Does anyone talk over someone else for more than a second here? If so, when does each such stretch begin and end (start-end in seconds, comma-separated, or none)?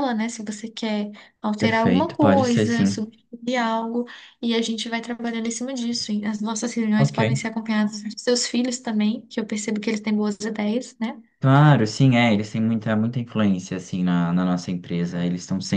1.6-3.0